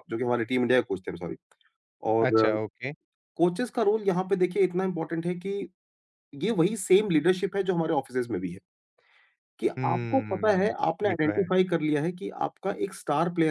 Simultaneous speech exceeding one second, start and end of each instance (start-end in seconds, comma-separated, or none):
9.8-11.5